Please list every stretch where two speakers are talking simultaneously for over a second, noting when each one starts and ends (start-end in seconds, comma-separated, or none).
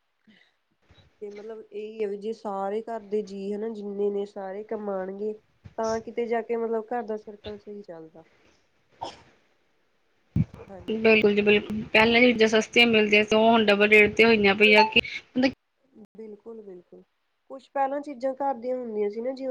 none